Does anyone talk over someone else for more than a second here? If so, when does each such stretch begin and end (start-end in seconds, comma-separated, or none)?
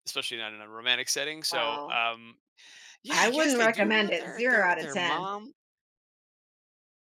3.1-5.3